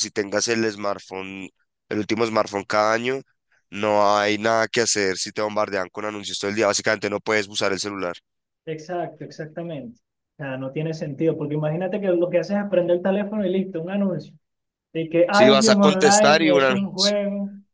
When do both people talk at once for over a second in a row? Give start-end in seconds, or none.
15.4-17.2